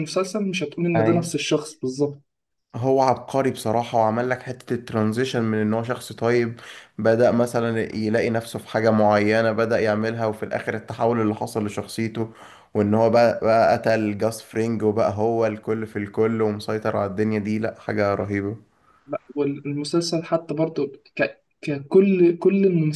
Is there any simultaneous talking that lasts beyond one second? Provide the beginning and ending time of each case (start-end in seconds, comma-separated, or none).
none